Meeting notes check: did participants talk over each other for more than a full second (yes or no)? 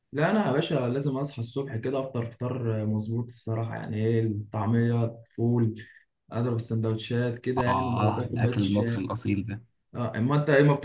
yes